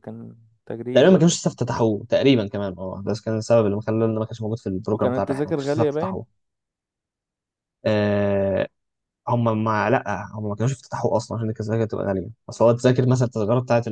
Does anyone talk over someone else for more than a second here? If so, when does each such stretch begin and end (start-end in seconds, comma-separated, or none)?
4.9-6.2